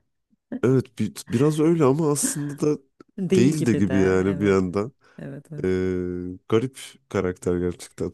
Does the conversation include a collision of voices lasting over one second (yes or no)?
yes